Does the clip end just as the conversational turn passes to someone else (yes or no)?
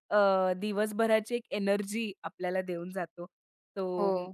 no